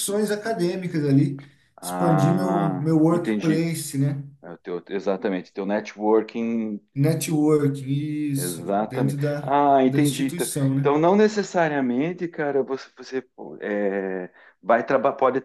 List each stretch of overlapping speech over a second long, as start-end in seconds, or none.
1.8-3.6, 8.3-10.9